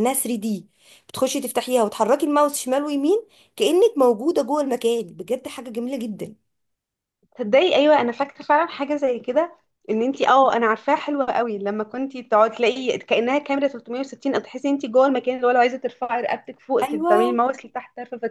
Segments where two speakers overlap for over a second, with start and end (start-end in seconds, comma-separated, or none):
none